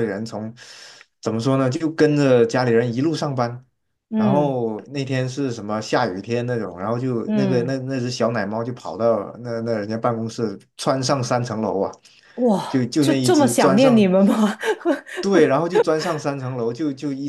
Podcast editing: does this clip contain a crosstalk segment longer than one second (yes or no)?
yes